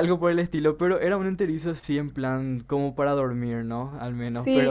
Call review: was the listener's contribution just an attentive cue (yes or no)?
no